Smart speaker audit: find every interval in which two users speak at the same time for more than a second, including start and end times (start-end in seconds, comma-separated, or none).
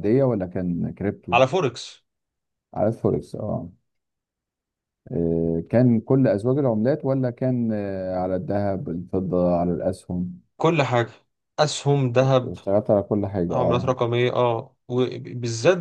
none